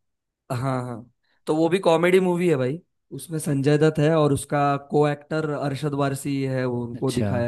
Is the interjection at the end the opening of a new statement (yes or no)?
yes